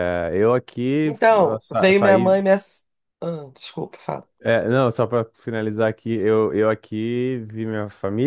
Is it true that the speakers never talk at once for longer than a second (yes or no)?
no